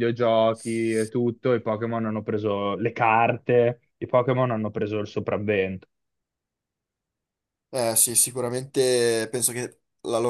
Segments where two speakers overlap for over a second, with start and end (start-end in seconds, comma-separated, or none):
none